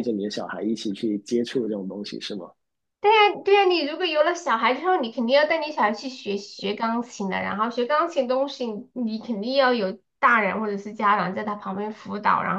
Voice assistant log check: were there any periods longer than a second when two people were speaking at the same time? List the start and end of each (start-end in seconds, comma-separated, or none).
none